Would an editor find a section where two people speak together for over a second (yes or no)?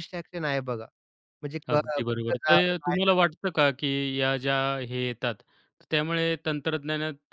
yes